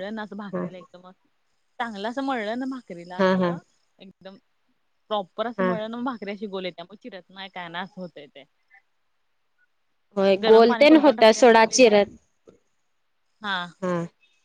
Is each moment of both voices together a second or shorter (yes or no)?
no